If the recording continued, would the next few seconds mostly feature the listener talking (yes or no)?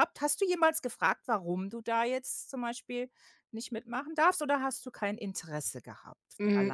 yes